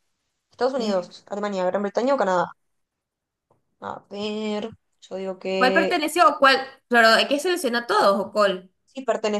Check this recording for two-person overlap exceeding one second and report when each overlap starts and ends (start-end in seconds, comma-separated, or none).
none